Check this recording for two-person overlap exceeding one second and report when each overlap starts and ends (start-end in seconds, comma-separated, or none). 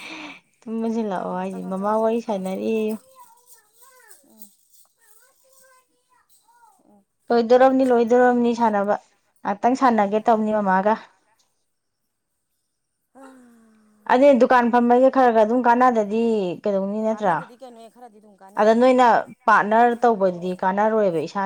1.1-2.6